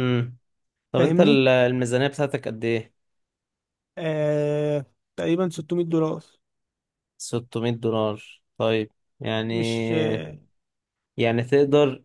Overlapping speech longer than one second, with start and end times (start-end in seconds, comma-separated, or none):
none